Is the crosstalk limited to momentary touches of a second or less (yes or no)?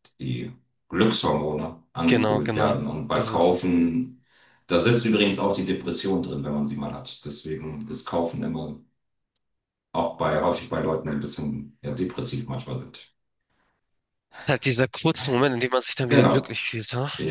no